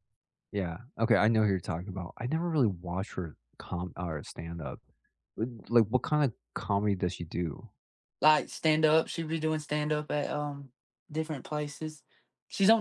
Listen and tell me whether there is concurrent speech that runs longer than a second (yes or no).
no